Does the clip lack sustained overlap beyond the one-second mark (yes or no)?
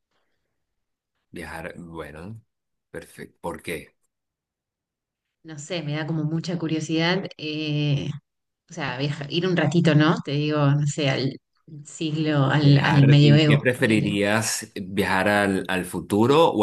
no